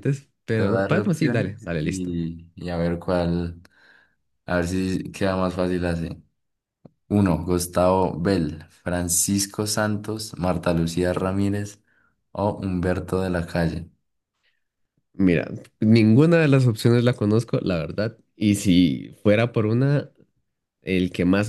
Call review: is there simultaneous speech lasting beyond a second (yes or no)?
yes